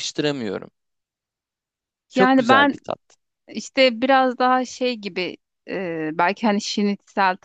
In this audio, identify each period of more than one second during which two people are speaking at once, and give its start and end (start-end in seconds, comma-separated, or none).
none